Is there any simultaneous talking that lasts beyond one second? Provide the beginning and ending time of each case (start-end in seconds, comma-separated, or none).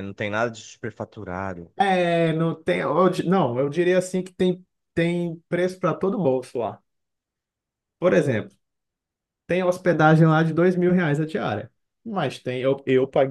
none